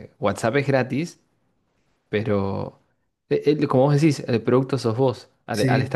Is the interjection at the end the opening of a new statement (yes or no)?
no